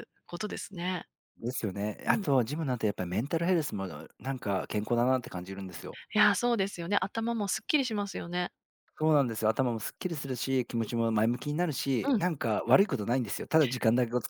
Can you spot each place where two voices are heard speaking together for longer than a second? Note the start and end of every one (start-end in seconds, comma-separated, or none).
none